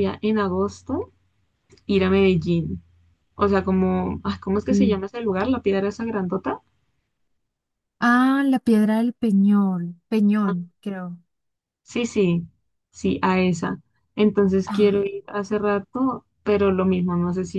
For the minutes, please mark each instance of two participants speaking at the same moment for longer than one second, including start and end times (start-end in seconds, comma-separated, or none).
none